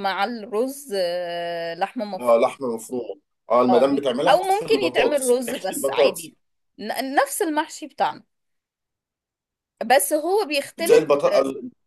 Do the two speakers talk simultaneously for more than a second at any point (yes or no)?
yes